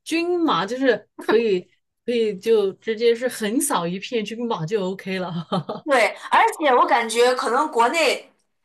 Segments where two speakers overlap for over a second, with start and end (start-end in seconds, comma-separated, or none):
none